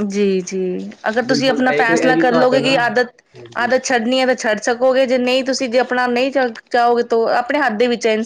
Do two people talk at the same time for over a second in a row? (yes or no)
yes